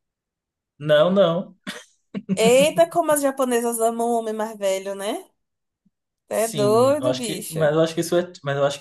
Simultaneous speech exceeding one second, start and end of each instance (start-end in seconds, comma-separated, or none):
6.3-7.7